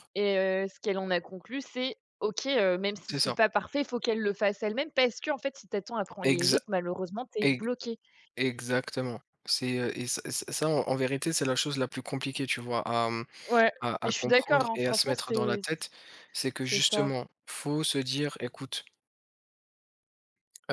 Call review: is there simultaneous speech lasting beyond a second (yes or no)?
yes